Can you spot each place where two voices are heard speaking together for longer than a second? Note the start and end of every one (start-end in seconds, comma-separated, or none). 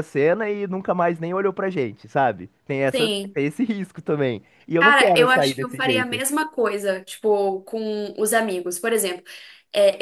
4.8-6.2